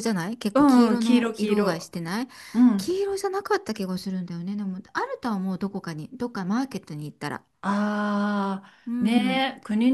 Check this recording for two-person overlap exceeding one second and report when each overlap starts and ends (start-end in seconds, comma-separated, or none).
0.5-1.9